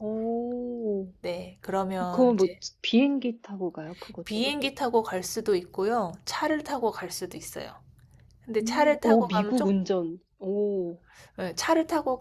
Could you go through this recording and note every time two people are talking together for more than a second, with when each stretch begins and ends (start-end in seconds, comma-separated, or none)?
8.6-9.8